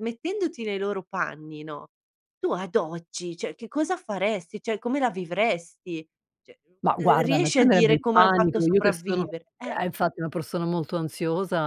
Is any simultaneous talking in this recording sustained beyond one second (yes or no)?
yes